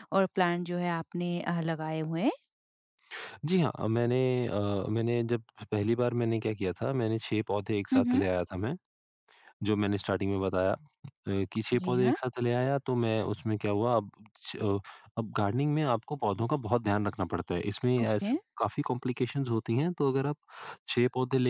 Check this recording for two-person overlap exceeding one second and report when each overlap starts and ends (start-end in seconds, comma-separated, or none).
none